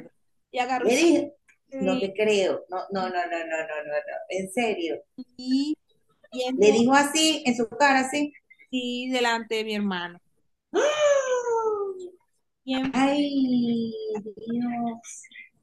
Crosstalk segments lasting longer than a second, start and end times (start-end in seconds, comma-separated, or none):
none